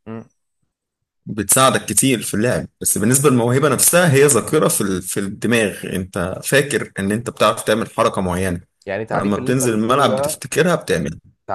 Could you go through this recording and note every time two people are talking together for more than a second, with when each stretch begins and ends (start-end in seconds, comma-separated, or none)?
9.1-10.4